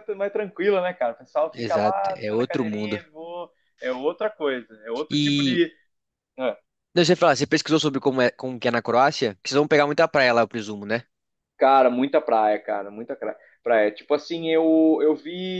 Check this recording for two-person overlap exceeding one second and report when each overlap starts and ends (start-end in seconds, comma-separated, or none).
1.5-3.0